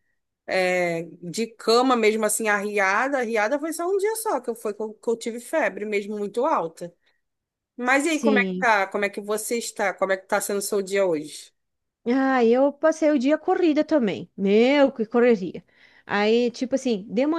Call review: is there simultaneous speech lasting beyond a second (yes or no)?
no